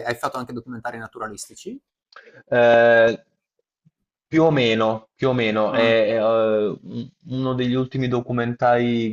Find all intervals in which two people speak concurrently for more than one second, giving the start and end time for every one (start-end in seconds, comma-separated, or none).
none